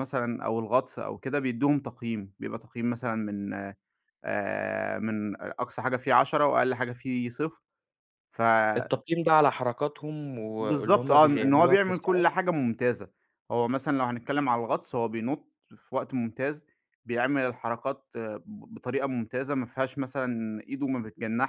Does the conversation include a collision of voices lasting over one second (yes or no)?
yes